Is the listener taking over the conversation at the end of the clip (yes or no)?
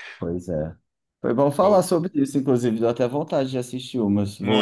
yes